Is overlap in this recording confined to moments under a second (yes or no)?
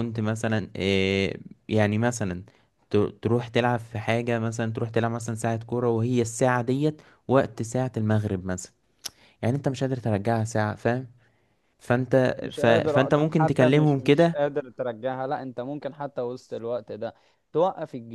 no